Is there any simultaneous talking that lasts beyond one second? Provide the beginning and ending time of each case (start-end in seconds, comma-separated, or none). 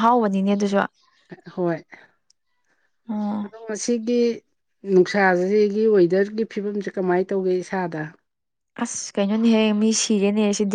none